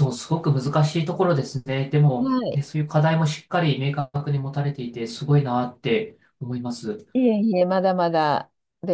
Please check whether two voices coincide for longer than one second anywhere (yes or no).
no